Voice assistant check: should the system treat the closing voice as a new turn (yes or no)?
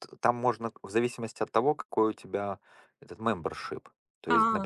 no